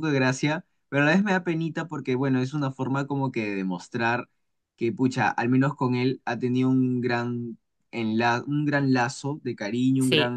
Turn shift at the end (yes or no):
no